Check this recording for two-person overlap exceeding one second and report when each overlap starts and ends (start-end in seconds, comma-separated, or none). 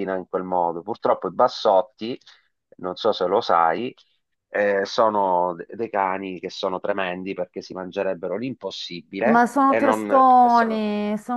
9.3-10.8